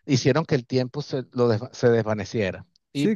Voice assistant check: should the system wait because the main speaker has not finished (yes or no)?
no